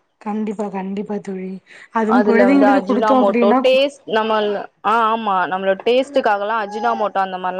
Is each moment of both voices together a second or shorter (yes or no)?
no